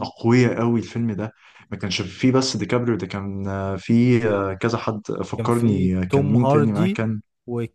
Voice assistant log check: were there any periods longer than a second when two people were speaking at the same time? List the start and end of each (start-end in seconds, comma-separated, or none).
5.4-7.0